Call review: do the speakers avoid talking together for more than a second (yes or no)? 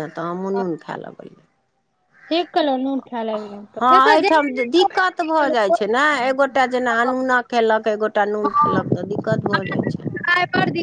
yes